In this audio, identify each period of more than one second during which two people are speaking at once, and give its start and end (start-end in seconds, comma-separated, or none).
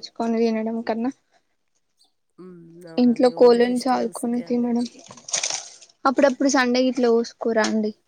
3.0-4.7